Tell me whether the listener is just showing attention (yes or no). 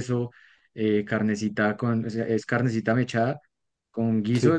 yes